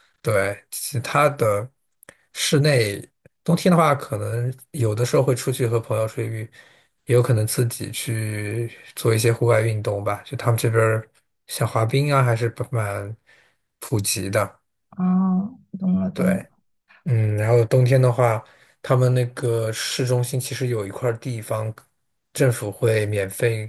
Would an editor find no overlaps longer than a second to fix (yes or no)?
yes